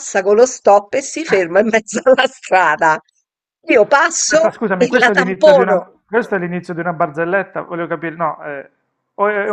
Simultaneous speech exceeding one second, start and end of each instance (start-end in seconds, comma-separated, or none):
4.3-5.9